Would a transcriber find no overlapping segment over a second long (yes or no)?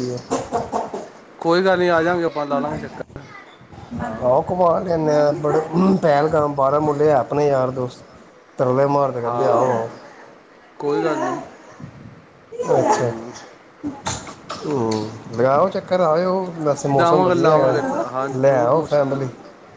no